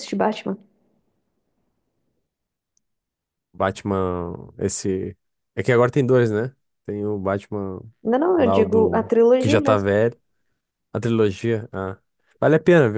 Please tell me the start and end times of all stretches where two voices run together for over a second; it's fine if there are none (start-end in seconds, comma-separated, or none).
8.3-9.9